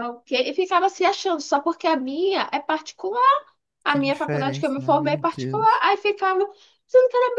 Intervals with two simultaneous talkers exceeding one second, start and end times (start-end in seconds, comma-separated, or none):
3.9-5.8